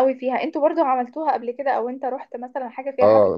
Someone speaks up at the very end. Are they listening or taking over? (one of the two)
taking over